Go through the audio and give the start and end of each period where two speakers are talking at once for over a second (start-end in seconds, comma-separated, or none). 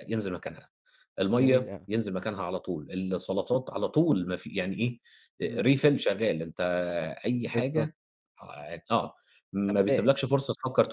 none